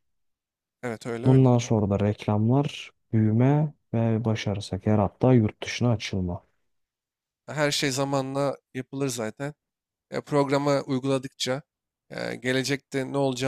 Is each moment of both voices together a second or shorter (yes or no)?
yes